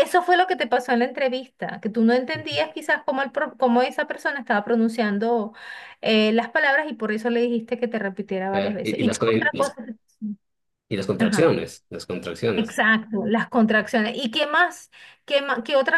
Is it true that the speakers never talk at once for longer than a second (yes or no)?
no